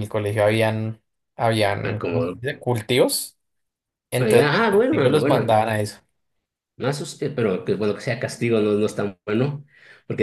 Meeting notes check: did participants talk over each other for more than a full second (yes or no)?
yes